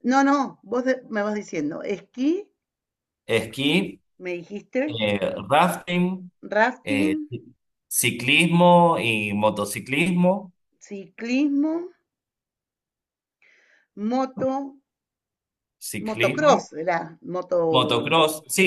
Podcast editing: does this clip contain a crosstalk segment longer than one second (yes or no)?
no